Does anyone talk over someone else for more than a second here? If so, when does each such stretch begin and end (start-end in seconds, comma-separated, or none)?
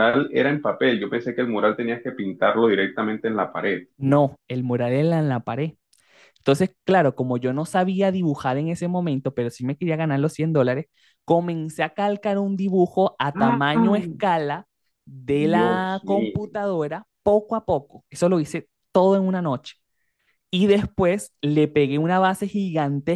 15.3-16.5